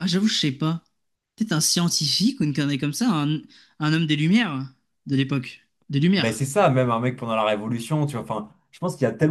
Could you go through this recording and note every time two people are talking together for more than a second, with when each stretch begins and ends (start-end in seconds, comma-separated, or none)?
none